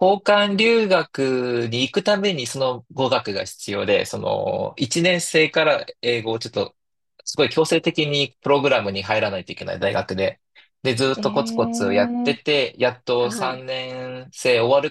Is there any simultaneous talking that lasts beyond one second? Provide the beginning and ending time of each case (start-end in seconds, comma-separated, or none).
11.1-12.4